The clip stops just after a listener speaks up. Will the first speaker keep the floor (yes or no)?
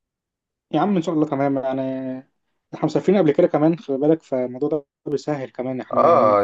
no